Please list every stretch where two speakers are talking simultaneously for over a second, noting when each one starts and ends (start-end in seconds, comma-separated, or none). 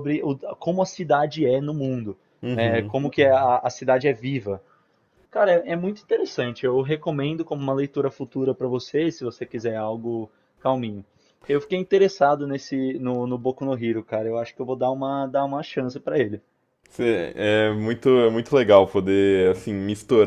none